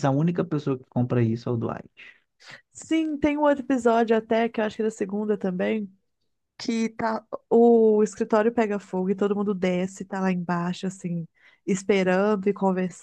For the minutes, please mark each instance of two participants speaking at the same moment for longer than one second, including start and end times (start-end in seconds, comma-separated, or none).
none